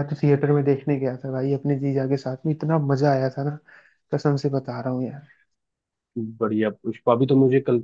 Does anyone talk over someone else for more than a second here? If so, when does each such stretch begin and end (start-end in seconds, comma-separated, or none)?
none